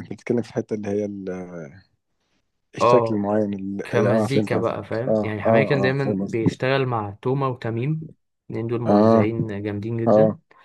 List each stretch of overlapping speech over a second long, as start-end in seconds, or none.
3.8-6.6